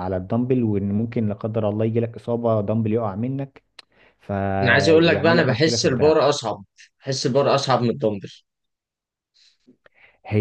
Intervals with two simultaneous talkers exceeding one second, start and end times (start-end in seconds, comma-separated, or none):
4.6-6.2